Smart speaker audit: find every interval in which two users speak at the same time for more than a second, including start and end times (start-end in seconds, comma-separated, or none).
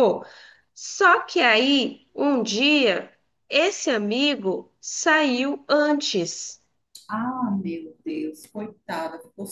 none